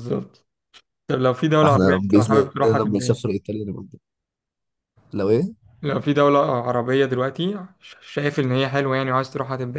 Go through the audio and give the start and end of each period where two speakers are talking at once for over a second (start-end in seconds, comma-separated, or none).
1.6-3.4